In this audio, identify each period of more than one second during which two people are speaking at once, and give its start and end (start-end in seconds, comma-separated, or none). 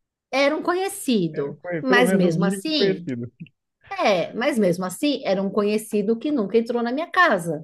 1.3-3.0